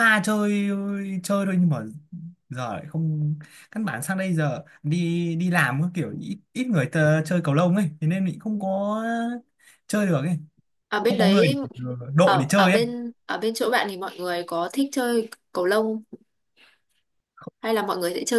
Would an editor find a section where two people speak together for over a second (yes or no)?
no